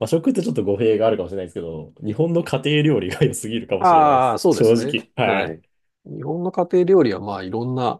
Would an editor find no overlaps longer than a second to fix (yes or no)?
no